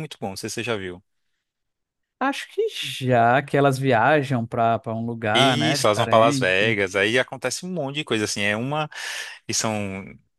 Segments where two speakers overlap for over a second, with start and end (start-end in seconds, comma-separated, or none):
5.3-6.8